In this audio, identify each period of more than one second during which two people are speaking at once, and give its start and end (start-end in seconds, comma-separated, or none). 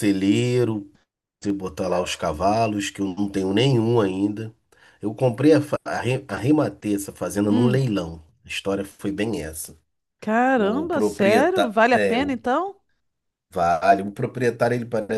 10.6-12.4